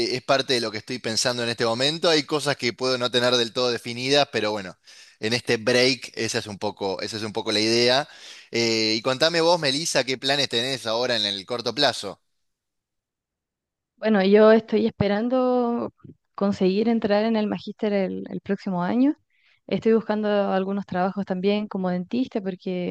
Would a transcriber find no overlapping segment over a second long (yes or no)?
yes